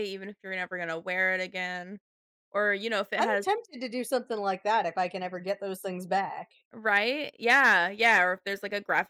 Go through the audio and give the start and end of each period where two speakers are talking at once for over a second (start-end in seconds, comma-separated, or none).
none